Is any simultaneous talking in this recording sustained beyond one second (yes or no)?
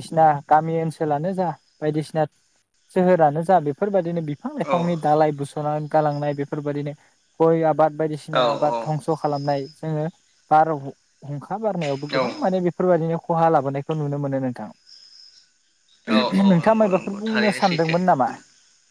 yes